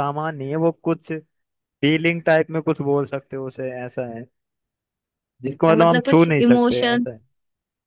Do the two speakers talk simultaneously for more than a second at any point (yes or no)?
yes